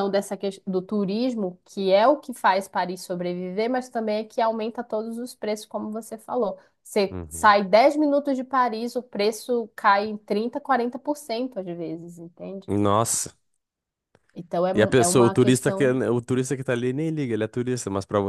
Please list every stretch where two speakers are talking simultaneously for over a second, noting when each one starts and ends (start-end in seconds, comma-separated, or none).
14.7-16.0